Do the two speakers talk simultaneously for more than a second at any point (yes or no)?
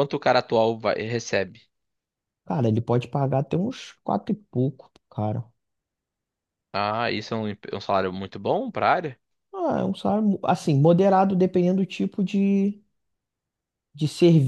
no